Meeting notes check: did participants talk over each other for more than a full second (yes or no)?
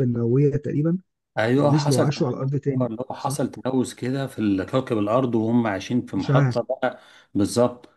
yes